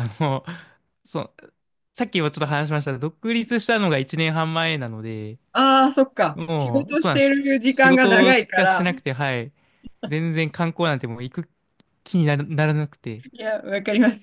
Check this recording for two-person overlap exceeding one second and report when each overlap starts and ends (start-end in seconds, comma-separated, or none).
6.3-8.9